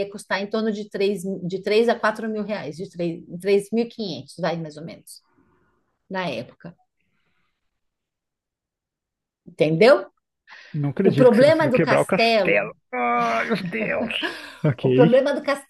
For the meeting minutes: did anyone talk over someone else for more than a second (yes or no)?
yes